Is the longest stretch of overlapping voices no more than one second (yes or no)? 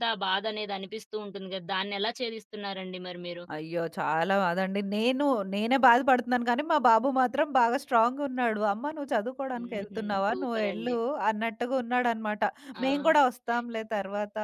no